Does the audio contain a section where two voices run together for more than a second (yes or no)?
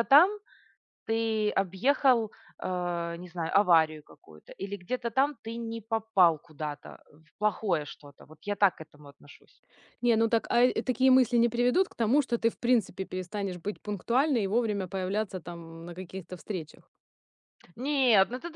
no